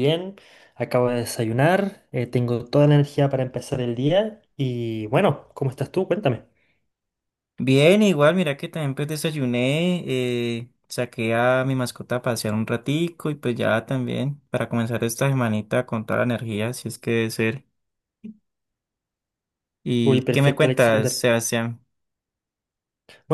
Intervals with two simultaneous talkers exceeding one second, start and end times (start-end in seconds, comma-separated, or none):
20.0-21.2